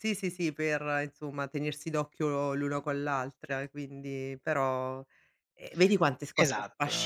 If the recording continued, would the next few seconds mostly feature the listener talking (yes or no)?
no